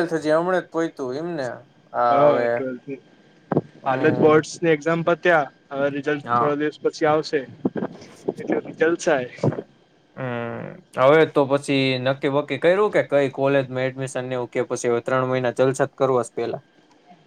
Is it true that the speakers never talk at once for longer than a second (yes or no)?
yes